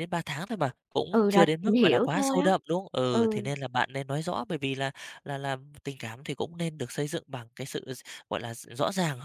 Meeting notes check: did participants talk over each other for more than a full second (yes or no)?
yes